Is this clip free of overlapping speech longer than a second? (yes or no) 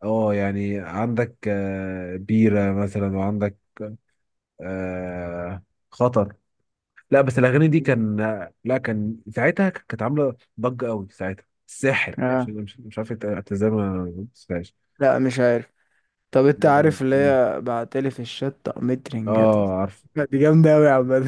yes